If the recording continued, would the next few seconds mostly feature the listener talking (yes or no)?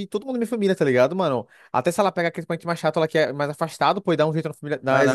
no